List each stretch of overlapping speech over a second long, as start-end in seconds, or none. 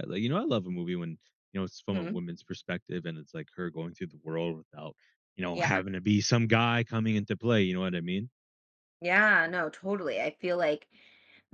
none